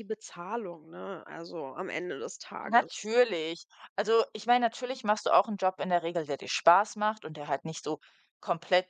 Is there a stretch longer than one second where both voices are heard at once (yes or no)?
no